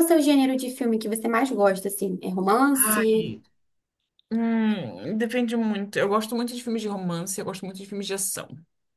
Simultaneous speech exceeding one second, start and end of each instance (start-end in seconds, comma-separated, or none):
none